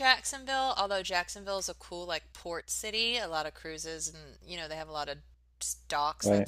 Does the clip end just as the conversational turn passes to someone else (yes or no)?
no